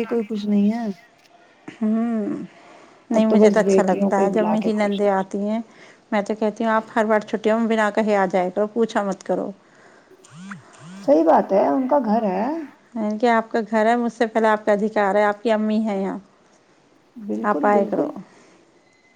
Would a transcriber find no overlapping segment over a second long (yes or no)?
no